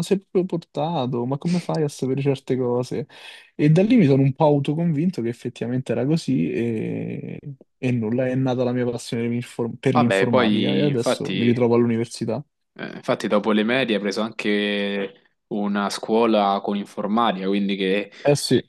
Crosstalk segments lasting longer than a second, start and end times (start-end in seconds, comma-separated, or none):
9.9-11.5